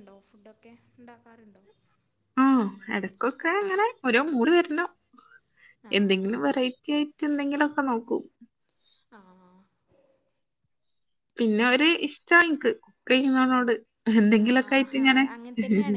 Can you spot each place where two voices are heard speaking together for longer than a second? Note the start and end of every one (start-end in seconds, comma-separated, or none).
none